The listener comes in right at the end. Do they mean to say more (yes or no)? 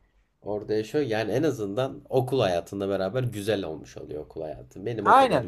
yes